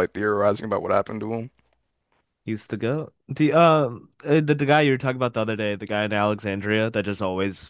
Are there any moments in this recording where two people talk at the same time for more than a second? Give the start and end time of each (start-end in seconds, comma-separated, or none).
none